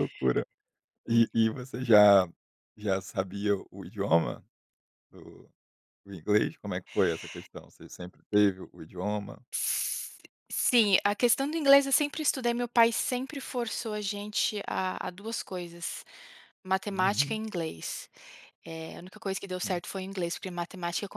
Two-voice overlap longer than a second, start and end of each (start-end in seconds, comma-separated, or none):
none